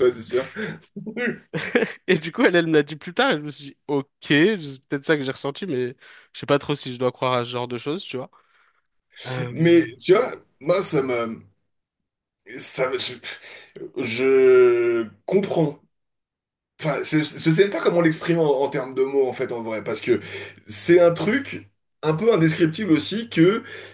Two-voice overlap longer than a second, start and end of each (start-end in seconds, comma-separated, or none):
none